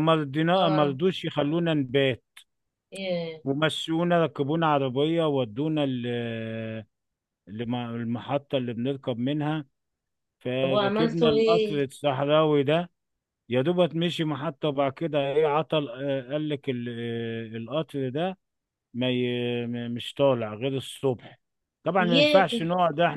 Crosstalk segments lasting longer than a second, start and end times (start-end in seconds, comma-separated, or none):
10.6-11.8